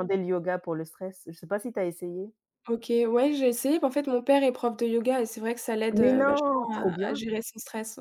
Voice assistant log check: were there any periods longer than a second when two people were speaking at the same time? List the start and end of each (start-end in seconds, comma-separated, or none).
5.9-7.2